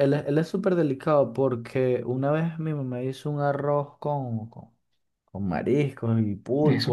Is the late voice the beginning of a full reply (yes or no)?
no